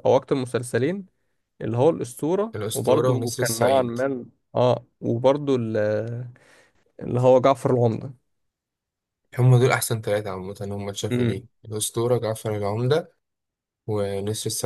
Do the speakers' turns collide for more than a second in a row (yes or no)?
yes